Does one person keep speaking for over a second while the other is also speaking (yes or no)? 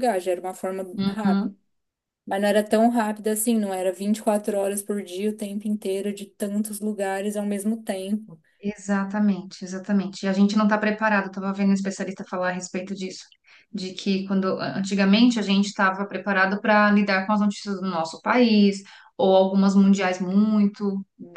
no